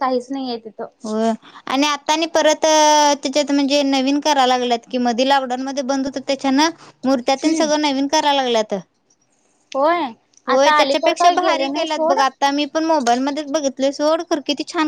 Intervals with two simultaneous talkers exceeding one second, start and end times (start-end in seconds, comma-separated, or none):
10.5-12.2